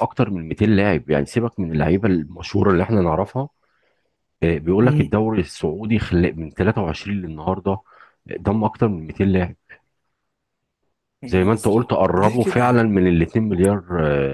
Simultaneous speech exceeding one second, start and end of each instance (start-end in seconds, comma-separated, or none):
11.3-12.9